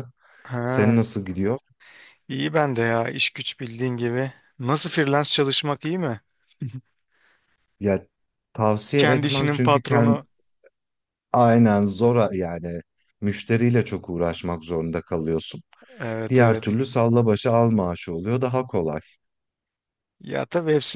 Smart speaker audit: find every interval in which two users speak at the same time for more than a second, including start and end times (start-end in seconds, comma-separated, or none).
9.0-10.2